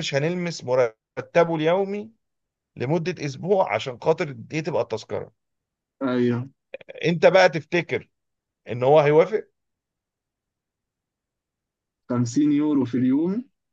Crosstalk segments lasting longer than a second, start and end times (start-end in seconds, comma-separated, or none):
none